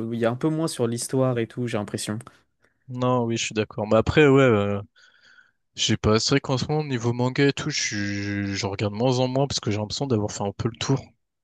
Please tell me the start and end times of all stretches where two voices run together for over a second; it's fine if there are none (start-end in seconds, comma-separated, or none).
none